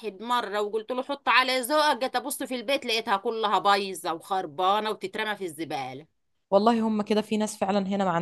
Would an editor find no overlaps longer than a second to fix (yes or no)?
yes